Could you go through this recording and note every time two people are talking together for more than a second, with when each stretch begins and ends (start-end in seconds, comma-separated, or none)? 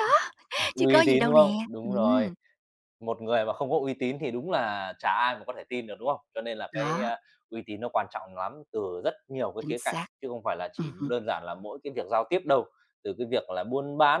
0.8-2.3